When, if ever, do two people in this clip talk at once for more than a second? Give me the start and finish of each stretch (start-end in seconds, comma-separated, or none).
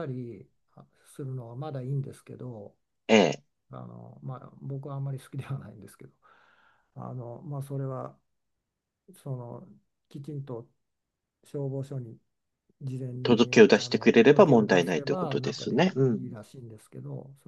13.2-16.3